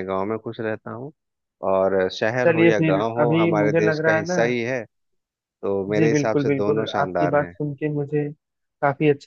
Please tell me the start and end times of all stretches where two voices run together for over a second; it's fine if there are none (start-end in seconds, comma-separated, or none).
2.5-4.4, 6.0-7.5